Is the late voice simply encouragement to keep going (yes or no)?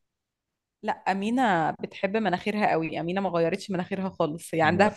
yes